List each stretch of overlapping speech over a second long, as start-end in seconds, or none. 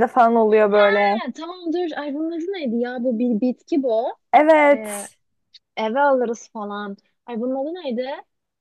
none